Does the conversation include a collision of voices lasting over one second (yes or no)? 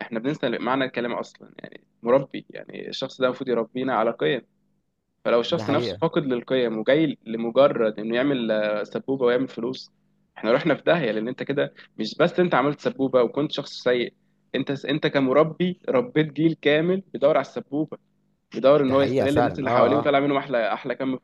yes